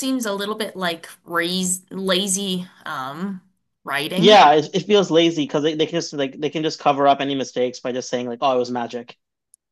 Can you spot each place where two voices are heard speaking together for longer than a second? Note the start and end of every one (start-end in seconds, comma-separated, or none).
none